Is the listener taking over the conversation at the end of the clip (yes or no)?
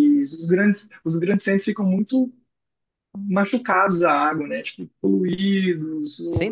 no